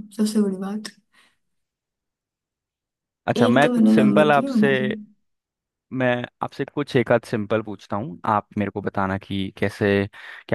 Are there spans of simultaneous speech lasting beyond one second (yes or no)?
yes